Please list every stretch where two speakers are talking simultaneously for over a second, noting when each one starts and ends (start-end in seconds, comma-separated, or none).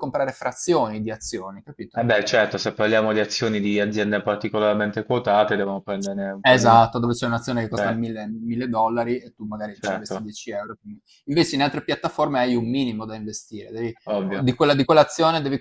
none